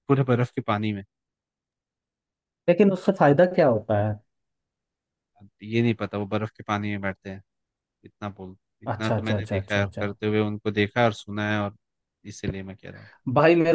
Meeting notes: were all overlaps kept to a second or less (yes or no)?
no